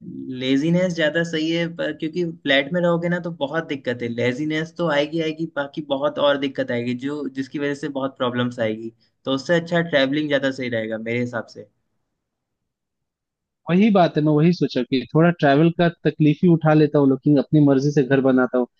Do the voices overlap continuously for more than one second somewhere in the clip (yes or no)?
no